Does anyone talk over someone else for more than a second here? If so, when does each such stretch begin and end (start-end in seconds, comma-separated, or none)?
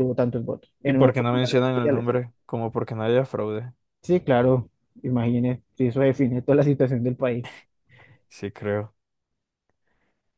0.8-2.1